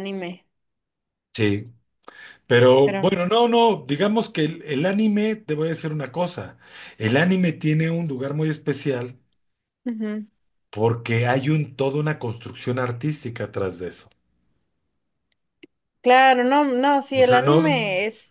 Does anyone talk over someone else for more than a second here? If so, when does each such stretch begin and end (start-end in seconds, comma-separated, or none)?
none